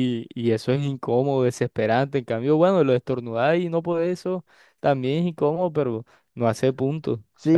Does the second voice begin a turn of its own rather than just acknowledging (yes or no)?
yes